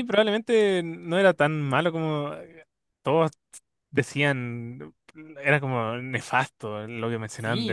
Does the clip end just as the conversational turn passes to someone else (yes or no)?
yes